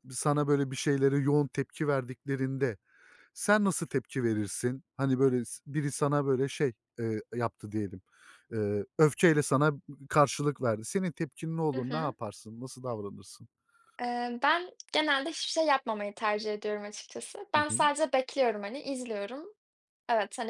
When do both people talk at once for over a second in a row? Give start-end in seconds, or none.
none